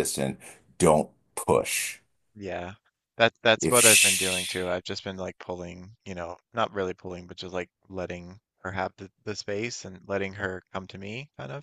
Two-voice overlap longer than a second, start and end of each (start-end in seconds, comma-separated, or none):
3.6-4.8